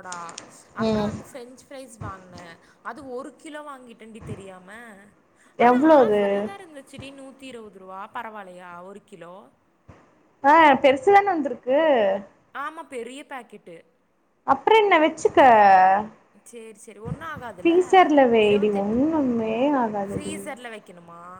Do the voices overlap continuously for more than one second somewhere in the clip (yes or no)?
no